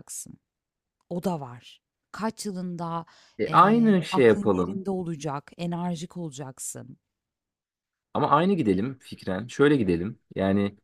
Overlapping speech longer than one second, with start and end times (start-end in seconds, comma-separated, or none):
3.5-4.8